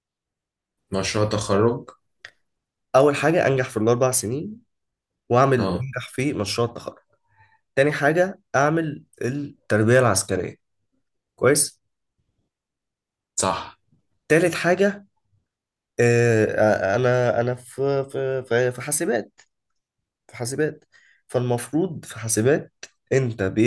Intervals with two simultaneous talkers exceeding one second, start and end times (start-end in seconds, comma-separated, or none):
none